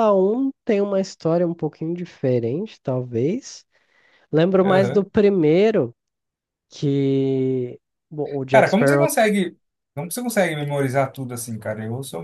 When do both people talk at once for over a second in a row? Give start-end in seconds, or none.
none